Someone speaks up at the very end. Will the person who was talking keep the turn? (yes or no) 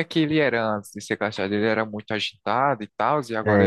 no